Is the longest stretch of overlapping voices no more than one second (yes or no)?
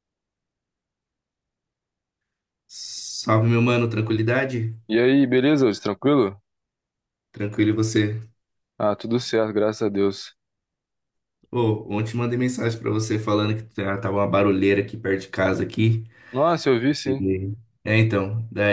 yes